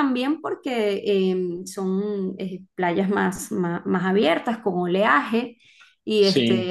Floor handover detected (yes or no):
no